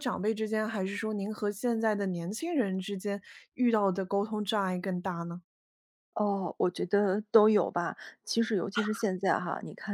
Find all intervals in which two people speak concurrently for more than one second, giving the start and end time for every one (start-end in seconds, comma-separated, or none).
none